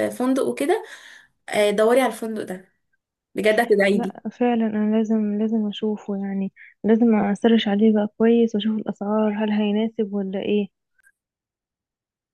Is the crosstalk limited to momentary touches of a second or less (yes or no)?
yes